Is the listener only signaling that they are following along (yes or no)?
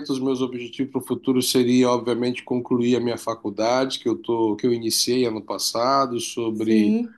yes